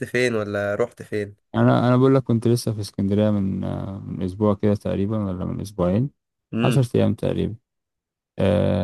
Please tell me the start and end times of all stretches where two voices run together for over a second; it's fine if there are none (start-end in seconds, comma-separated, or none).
none